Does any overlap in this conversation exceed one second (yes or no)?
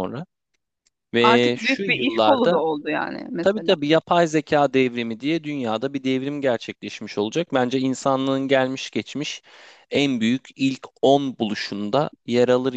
yes